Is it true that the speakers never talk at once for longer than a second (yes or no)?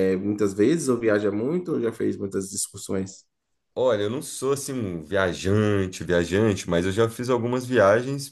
yes